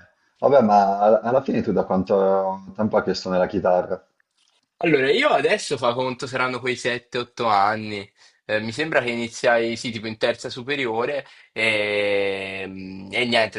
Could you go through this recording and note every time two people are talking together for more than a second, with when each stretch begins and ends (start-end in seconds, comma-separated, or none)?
none